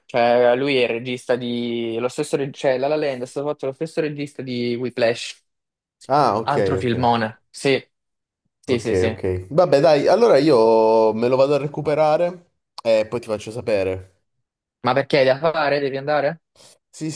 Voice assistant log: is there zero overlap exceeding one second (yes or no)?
yes